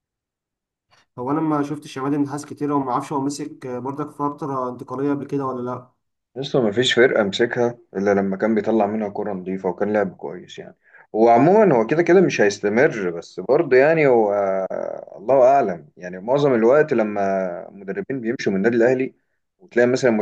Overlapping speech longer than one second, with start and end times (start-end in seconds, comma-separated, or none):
none